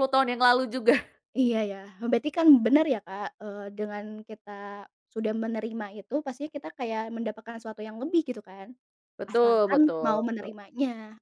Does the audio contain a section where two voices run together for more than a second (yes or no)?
yes